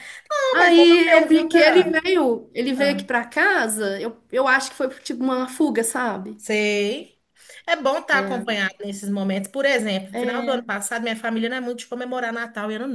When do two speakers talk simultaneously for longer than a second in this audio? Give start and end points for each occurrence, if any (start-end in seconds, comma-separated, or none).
0.5-2.0